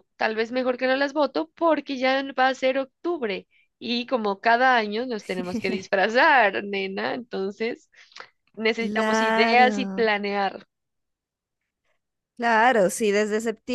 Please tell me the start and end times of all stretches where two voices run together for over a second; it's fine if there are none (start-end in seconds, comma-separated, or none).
8.8-10.0